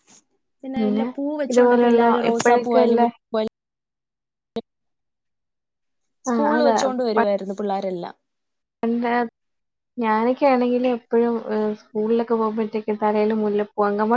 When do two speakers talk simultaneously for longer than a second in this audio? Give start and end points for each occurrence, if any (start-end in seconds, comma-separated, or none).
1.5-3.0